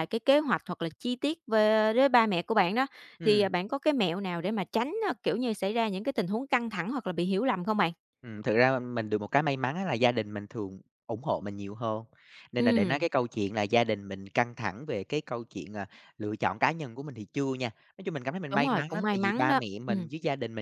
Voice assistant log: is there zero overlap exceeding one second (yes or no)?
no